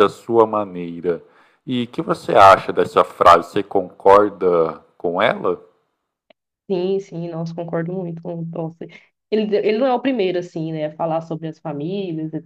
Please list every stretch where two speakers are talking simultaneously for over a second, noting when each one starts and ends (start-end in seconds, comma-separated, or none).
none